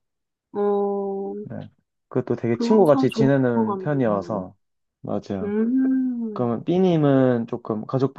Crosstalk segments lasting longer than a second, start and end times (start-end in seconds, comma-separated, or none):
2.5-4.5